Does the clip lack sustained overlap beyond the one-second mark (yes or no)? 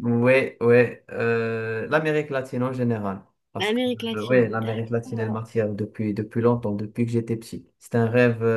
no